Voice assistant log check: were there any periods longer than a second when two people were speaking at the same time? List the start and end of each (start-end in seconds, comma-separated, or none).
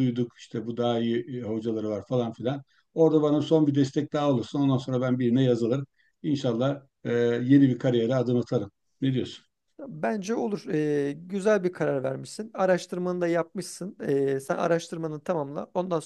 none